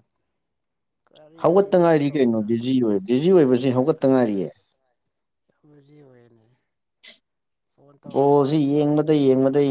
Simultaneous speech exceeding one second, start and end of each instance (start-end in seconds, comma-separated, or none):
1.4-2.7